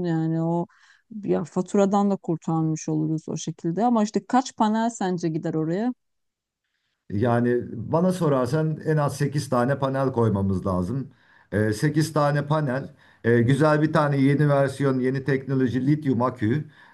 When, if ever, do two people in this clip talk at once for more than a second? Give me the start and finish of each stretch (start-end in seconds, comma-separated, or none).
none